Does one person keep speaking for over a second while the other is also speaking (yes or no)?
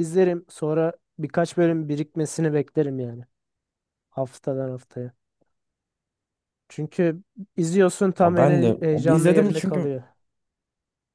yes